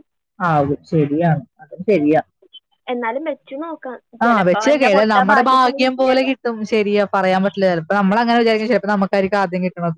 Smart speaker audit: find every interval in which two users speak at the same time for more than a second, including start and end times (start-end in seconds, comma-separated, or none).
4.3-6.2